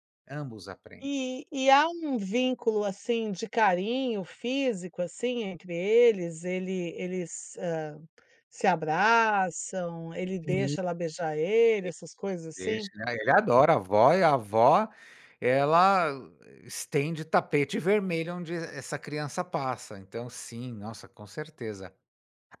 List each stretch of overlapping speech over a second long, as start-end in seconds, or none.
none